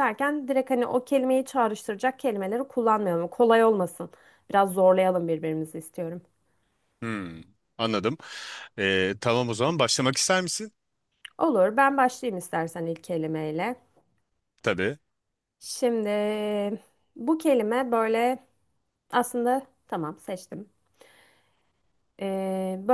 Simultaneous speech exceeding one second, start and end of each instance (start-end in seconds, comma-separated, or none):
none